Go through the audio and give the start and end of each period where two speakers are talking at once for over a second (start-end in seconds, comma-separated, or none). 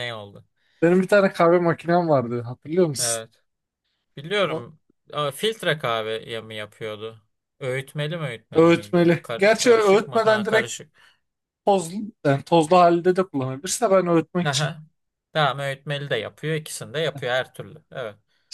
8.6-10.7